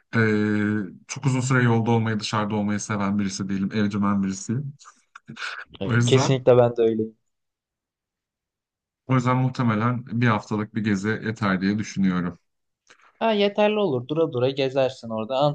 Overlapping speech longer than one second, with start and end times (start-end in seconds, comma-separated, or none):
none